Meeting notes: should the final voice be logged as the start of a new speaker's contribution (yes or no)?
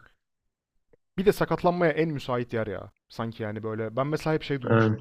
no